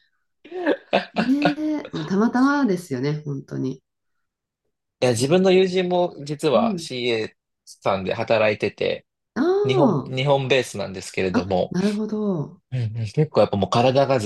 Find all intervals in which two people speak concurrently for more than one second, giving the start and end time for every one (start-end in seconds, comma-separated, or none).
none